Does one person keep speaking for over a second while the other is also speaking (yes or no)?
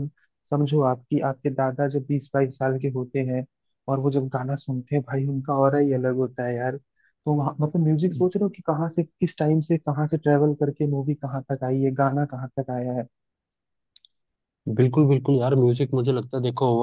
no